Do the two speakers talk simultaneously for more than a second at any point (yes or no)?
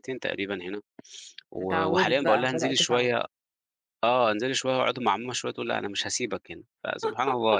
yes